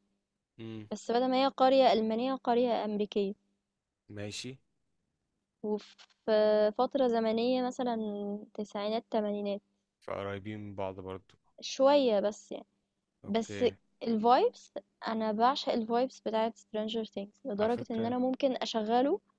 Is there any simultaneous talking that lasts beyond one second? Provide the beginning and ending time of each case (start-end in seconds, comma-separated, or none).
none